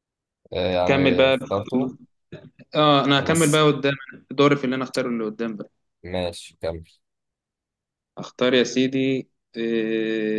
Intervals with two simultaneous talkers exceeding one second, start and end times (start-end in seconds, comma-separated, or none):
none